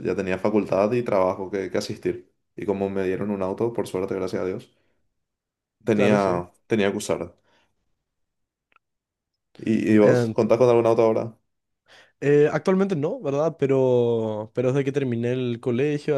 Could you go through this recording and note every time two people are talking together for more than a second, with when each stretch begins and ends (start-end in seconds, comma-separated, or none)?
none